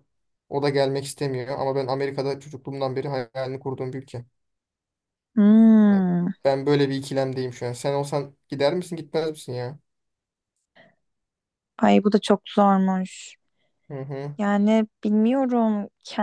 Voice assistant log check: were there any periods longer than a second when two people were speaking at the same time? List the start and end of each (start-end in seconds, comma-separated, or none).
none